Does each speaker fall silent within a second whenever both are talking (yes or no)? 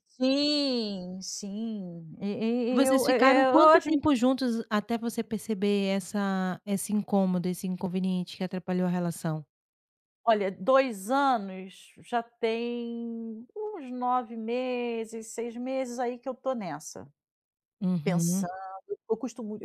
no